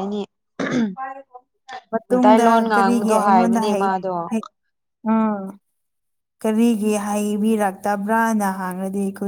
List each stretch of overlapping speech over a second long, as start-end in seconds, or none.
2.1-3.9